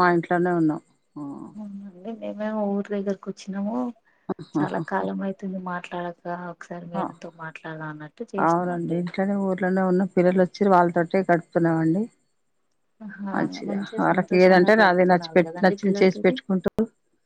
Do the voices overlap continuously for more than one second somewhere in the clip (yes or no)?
yes